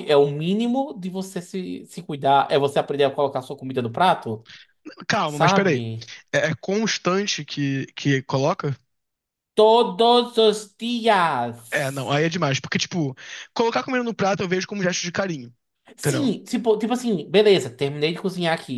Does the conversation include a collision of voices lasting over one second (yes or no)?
no